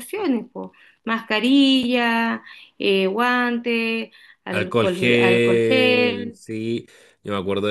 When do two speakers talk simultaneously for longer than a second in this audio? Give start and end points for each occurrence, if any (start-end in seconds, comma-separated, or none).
4.5-6.4